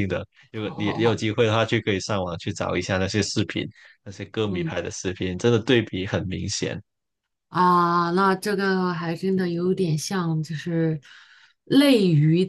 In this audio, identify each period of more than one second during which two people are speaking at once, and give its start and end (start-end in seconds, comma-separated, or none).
none